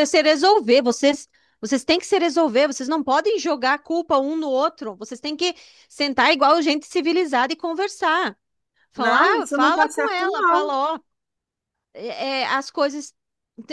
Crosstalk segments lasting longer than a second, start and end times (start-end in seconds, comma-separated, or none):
8.9-10.8